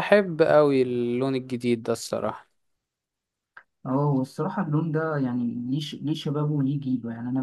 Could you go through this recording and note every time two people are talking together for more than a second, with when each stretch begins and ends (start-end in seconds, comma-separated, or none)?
none